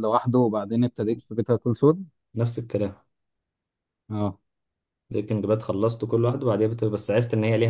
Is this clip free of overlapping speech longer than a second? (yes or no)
yes